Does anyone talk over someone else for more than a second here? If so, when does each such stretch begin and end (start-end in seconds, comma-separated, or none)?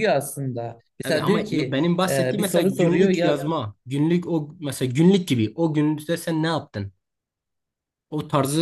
1.0-3.4